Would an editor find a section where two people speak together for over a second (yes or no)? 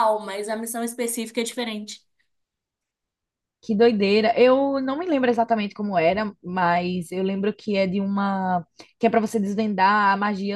no